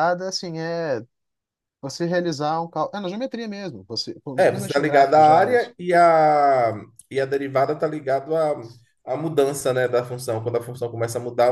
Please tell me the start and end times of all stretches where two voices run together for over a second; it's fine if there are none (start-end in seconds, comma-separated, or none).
4.5-5.7